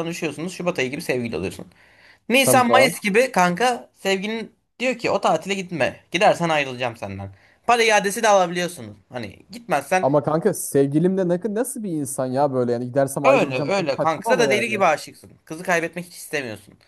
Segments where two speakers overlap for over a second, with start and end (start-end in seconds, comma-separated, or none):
13.2-14.8